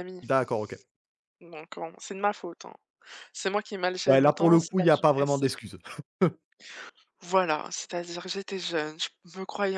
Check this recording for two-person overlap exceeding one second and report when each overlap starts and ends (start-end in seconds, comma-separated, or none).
4.1-5.4